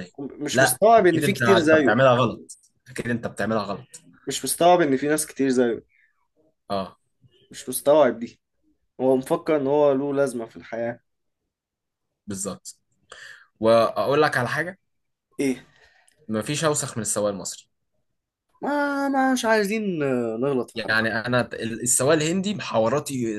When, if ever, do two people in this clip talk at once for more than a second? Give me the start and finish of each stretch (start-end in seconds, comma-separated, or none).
0.5-2.0